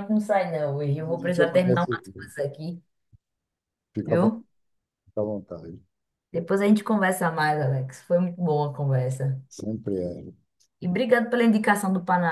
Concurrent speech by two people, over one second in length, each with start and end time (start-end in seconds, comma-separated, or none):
1.1-2.3